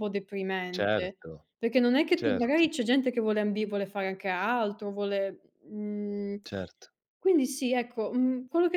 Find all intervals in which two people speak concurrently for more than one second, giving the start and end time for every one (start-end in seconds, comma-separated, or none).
none